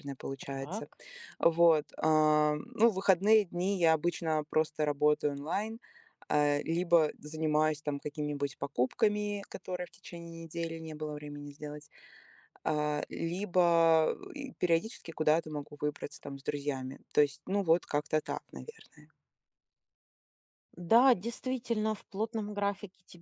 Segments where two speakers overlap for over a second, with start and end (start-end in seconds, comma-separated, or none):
none